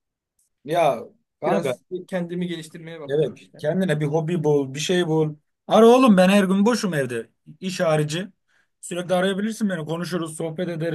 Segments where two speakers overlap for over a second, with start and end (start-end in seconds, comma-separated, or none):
none